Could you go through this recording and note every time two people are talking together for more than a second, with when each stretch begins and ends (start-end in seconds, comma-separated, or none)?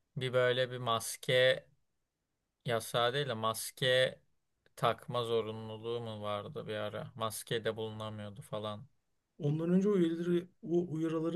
none